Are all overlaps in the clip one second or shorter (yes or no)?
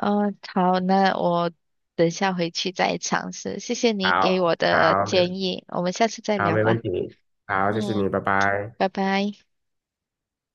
no